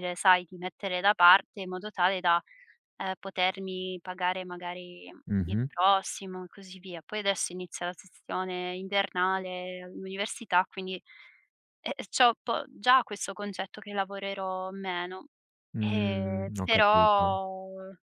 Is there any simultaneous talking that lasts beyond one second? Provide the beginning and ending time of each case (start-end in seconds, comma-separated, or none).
15.8-17.4